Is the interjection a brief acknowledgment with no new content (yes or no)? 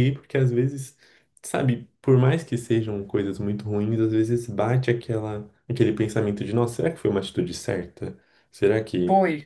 no